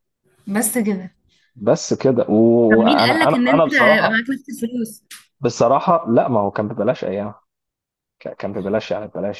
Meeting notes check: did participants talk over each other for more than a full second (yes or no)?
yes